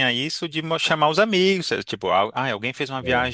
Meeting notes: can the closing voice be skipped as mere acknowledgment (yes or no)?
yes